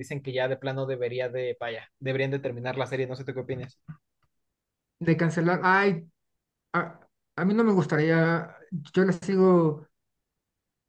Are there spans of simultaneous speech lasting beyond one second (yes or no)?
no